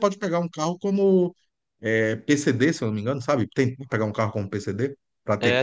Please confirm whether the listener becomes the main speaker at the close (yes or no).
yes